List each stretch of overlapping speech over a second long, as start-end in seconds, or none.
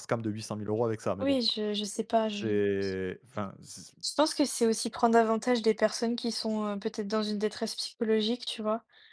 none